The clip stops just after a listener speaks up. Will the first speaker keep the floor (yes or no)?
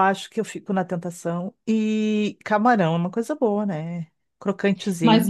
no